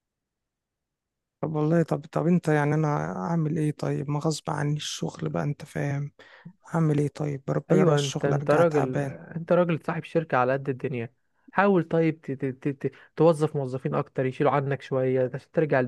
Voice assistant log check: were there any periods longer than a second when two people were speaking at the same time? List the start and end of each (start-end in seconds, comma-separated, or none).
7.7-9.2